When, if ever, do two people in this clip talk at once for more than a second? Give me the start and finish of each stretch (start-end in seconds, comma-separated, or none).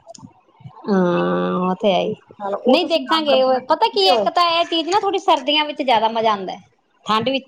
2.7-4.3